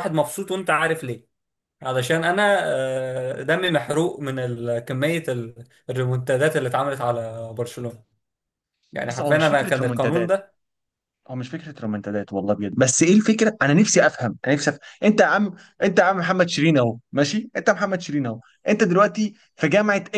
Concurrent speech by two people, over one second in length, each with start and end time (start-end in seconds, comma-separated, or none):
9.1-10.3